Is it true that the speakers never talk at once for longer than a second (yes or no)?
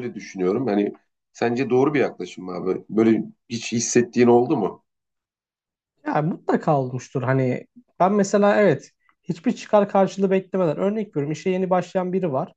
yes